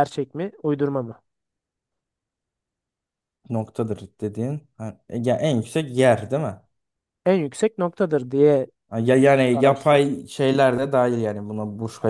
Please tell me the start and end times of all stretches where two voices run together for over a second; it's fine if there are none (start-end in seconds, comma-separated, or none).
none